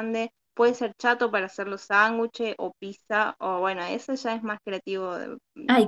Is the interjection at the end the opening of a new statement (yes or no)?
yes